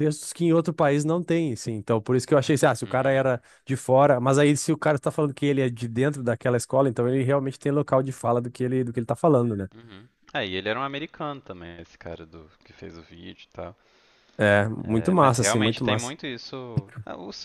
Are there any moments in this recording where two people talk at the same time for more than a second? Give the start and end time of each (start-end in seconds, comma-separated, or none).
14.8-16.1